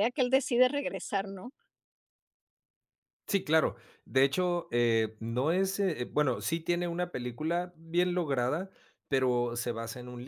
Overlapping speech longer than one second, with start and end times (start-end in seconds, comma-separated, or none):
none